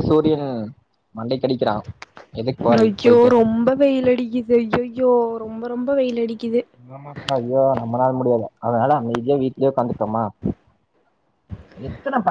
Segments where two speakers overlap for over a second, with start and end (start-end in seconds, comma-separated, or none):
none